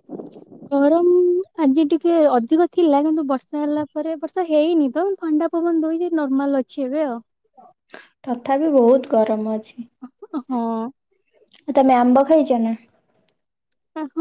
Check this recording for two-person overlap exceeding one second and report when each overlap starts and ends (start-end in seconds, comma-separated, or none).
none